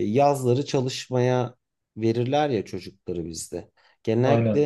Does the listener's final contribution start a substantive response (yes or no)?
no